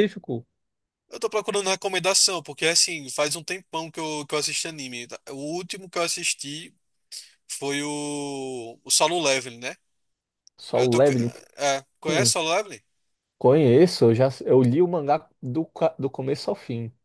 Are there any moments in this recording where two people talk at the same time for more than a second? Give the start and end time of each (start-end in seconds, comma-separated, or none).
none